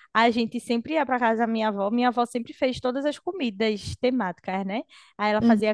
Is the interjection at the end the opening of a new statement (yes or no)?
no